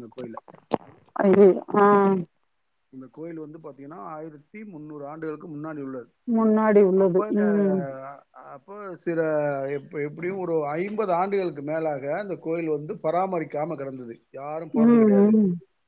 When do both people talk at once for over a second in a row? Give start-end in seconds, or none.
none